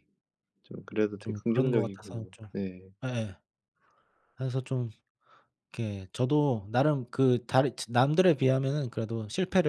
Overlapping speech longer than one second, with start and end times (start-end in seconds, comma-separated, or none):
1.2-2.5